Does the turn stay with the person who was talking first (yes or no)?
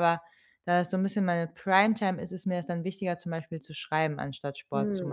no